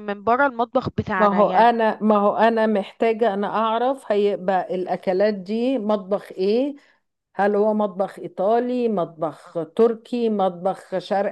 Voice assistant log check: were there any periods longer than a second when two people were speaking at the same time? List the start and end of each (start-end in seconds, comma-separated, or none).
none